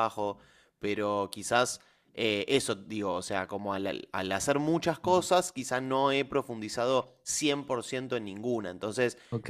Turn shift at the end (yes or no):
yes